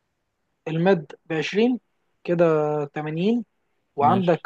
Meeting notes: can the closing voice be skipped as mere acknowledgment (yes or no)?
yes